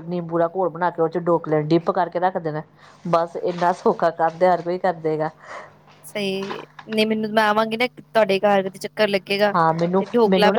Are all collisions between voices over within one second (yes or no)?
yes